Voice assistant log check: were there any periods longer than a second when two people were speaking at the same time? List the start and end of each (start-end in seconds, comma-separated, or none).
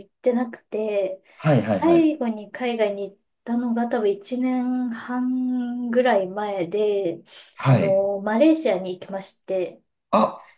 none